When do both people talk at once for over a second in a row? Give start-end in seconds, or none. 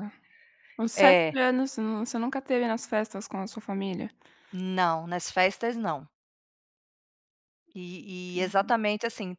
none